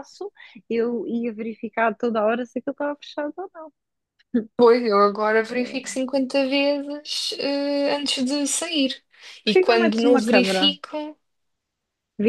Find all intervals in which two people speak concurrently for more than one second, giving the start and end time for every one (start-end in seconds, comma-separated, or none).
9.4-10.8